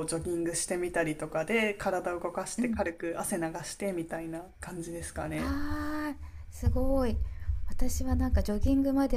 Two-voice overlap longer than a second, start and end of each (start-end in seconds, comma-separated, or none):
none